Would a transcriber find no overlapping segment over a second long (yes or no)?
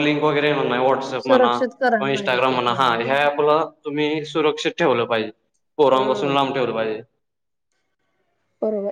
no